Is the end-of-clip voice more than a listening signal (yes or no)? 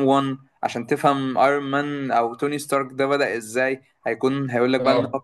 no